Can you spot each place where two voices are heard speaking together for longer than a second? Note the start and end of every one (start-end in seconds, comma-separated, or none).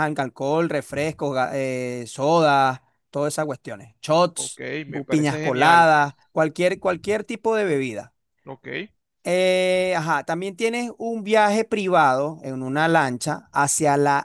4.3-5.9